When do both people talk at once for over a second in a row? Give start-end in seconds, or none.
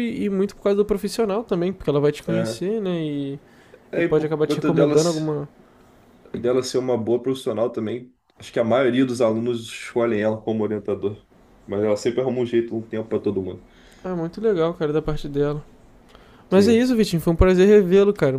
4.0-5.2